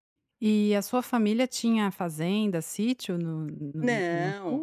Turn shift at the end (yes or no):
yes